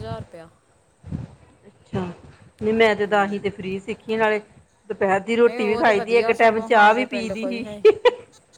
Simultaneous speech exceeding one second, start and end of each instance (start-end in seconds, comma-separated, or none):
5.5-7.6